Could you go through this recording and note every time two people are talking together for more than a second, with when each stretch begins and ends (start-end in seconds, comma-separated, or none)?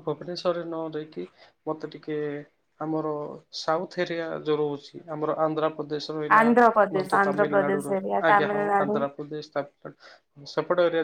6.4-9.0